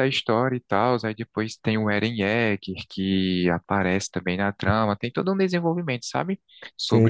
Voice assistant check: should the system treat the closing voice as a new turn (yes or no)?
yes